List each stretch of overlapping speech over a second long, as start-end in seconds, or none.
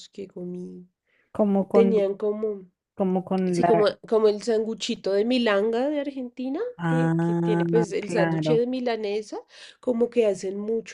6.8-8.6